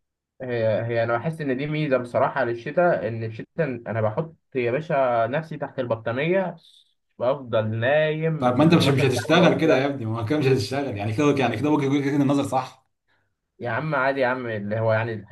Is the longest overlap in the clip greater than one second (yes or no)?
yes